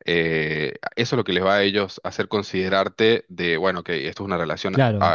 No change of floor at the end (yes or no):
no